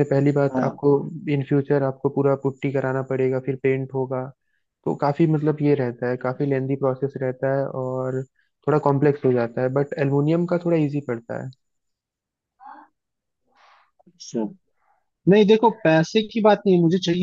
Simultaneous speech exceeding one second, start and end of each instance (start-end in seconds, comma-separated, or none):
none